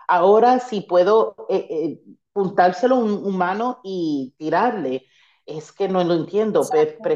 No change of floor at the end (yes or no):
yes